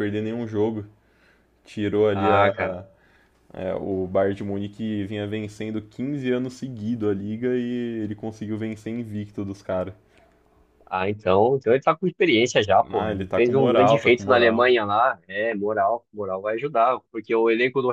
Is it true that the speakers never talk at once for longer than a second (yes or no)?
no